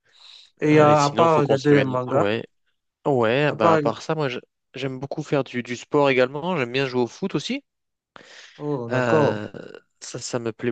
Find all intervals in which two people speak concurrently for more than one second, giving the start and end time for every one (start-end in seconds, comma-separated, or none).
0.6-2.2